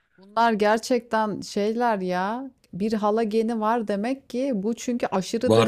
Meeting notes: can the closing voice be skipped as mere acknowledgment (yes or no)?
yes